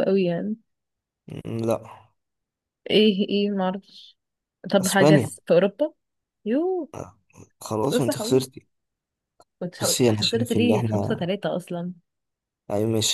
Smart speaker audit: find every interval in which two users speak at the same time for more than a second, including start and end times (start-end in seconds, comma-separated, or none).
9.8-11.3